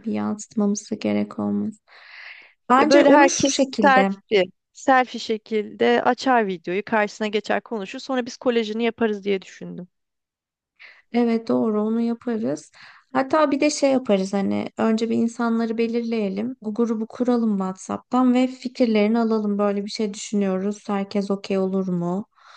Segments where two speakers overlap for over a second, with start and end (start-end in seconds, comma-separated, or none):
2.8-4.1